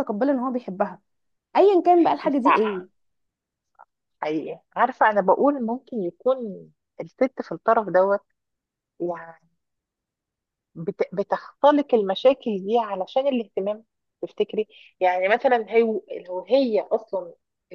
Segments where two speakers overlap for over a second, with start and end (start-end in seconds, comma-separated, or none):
none